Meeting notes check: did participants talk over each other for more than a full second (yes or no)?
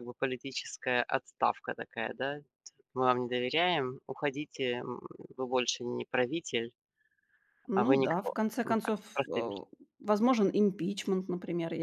yes